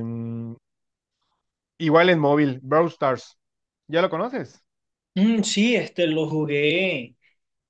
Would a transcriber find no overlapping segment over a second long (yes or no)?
yes